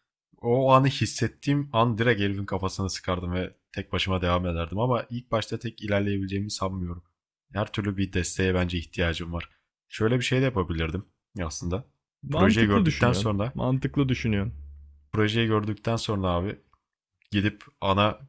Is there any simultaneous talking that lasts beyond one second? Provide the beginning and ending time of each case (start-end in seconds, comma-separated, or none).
12.3-13.6